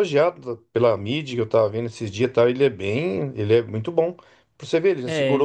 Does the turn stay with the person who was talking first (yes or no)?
yes